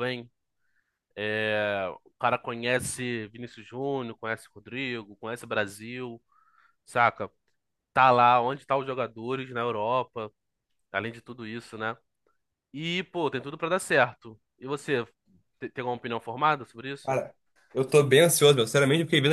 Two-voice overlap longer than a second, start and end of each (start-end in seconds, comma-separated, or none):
none